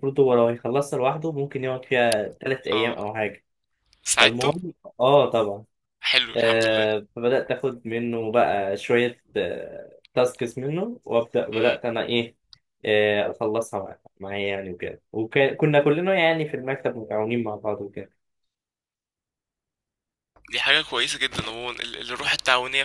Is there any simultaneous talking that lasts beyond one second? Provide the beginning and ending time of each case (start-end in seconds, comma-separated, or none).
none